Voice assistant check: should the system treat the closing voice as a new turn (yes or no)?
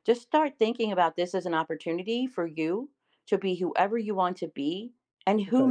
no